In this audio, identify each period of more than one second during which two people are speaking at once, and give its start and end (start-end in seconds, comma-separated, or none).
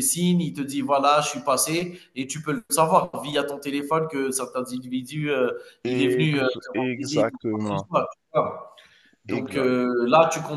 5.8-7.9